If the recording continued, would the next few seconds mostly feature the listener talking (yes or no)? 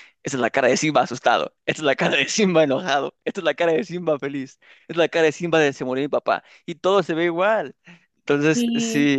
no